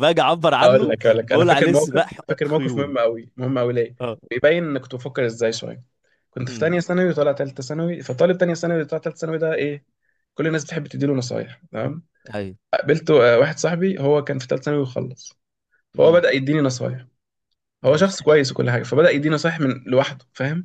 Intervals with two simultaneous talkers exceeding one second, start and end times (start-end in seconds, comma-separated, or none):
0.6-3.0